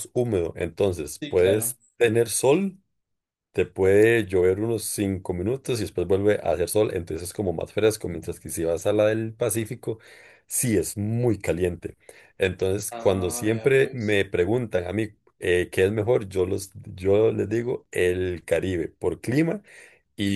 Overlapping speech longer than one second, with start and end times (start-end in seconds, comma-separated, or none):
12.9-14.2